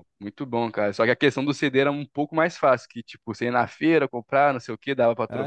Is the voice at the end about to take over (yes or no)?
yes